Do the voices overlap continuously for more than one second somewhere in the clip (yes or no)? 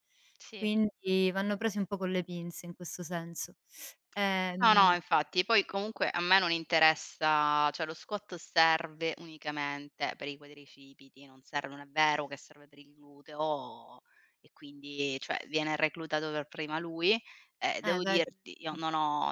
no